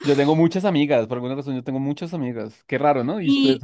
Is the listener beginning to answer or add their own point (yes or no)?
yes